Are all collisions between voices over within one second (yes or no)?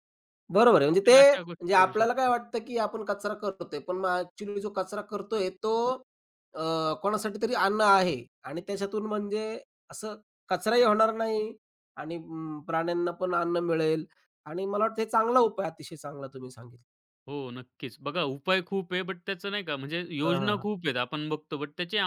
no